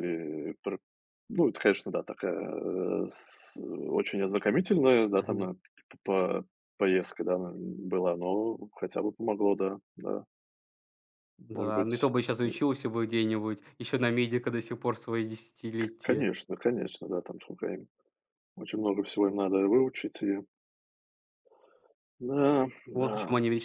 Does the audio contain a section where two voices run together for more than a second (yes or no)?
no